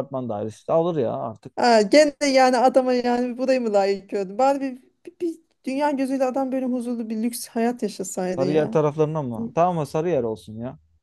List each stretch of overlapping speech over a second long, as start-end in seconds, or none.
none